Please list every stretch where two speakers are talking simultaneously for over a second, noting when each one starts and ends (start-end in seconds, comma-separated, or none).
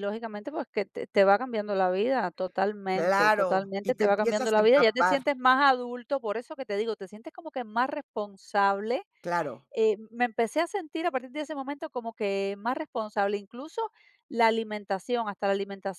2.9-5.2